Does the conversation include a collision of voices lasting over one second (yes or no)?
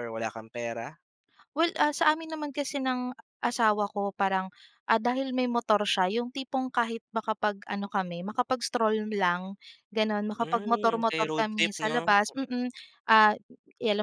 yes